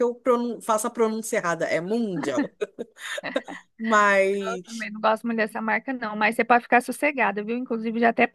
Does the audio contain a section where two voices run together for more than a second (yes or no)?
no